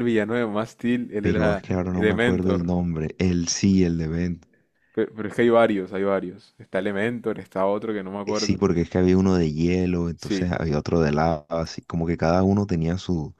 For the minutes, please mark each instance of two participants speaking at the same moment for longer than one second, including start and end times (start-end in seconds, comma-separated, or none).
1.2-2.7